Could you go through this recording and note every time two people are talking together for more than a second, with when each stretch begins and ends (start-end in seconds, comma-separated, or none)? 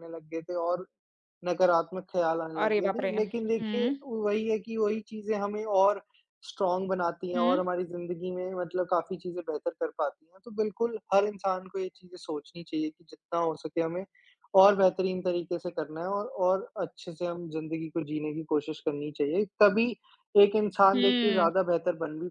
2.6-4.0